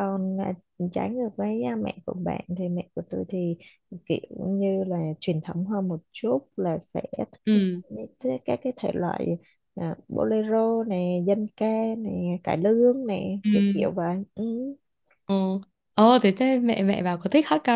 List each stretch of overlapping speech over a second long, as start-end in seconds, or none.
none